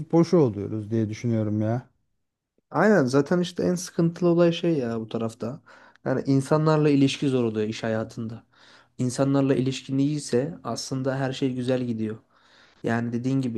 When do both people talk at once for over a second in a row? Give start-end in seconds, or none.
none